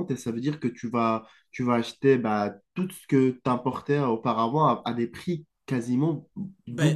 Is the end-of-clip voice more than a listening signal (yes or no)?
yes